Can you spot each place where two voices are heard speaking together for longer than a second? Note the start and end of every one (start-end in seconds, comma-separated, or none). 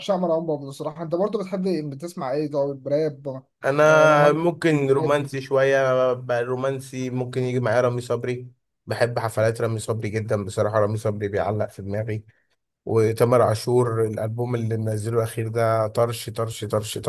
3.9-5.3